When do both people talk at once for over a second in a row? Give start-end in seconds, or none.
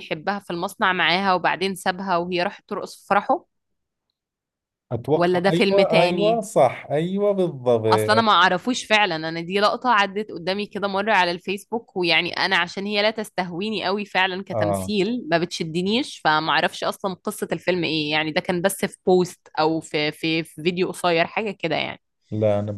5.1-6.4